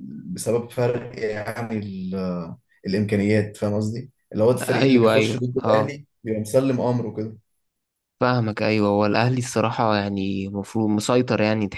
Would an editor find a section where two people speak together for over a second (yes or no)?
yes